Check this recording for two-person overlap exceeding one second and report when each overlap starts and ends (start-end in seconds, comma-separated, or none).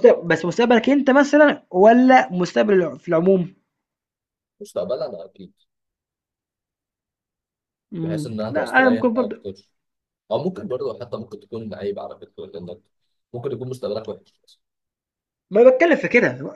8.0-9.4